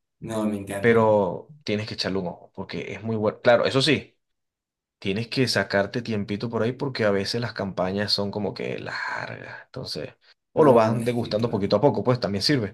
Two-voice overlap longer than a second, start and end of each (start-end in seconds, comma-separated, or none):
10.6-11.8